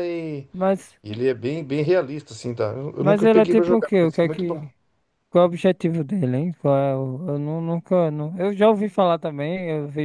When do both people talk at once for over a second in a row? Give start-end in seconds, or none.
3.0-4.6